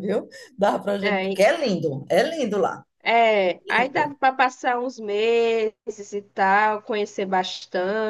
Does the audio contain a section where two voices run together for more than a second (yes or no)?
no